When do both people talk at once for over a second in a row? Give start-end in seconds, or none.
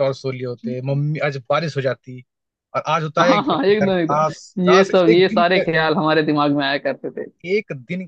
3.2-5.7